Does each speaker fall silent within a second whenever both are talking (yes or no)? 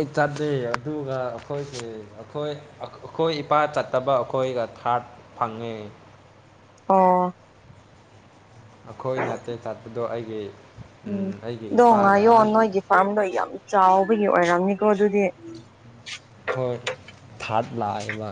yes